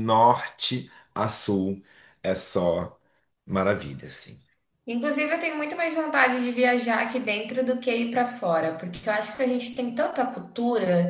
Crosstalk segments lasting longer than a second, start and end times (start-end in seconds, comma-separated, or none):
none